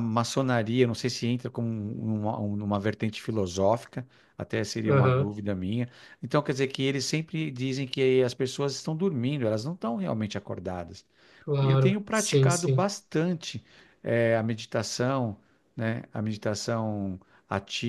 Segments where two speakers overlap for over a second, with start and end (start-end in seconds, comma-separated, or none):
11.6-12.9